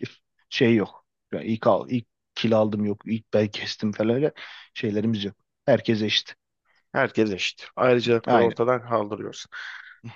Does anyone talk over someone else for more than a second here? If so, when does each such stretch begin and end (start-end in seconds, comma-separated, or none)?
none